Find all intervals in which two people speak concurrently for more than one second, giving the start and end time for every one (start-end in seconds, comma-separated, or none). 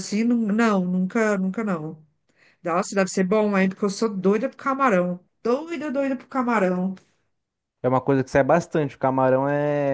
none